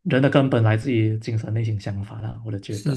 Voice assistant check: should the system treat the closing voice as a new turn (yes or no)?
yes